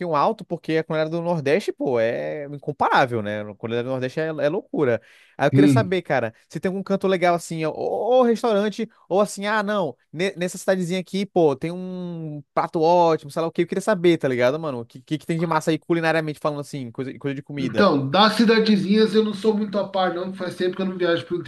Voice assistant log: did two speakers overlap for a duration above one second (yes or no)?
no